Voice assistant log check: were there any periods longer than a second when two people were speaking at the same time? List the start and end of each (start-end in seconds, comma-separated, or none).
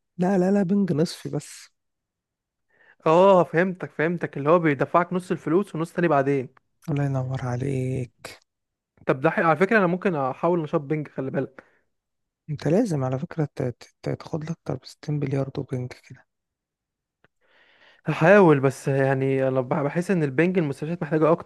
none